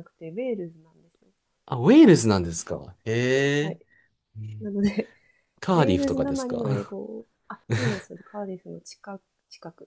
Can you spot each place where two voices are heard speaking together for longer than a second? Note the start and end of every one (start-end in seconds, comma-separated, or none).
5.7-6.9